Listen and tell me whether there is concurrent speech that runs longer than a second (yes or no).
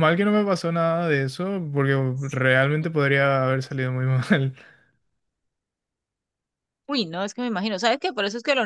no